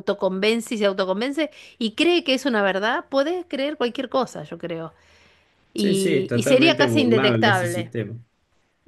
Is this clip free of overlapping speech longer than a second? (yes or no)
no